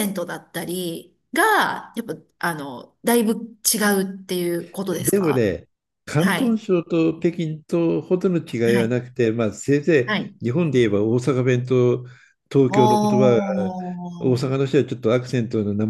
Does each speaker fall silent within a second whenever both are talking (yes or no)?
yes